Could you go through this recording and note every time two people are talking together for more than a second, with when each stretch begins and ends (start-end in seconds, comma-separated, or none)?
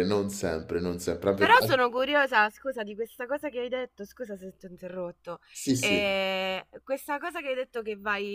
none